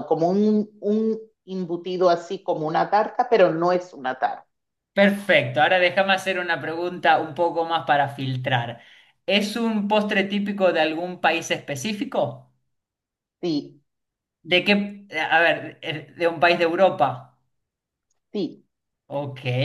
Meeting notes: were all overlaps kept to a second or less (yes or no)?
yes